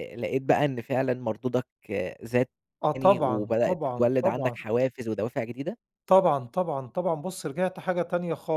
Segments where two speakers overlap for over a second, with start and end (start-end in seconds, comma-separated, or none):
2.9-4.6